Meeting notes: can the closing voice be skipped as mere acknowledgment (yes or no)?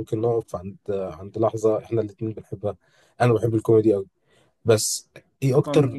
yes